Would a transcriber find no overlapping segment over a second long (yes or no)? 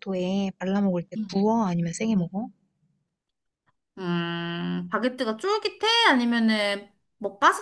yes